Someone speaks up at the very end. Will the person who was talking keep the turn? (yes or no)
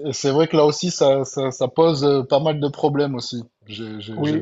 no